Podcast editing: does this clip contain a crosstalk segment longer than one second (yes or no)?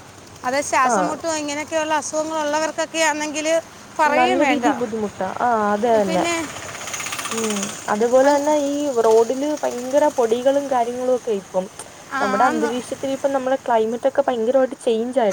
no